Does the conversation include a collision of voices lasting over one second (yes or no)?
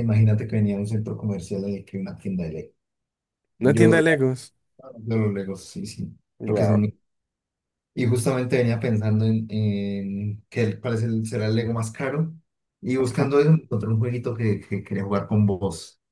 no